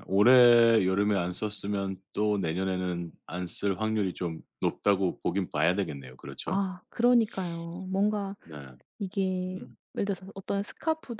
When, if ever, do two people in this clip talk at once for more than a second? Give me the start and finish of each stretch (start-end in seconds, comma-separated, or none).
none